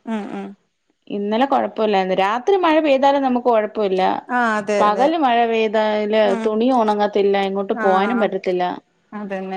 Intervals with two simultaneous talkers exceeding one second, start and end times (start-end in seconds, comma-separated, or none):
none